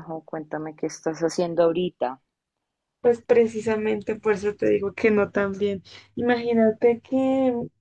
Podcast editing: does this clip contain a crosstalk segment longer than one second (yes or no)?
no